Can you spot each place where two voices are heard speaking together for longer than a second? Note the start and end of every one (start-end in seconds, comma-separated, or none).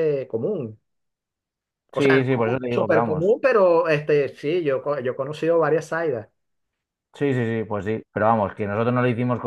1.9-3.4